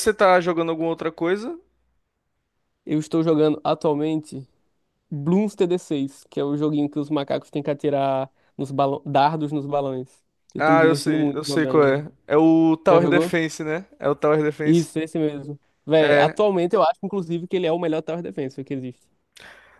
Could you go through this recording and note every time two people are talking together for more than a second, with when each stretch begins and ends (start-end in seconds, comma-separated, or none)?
10.6-12.1